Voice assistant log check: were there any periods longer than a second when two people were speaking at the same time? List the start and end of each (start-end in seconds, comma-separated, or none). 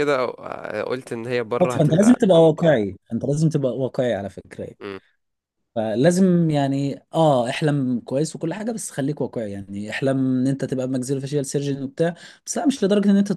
1.6-2.8